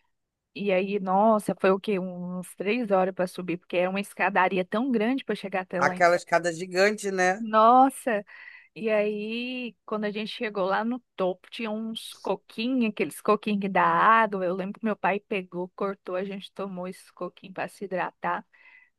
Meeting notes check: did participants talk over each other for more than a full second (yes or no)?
no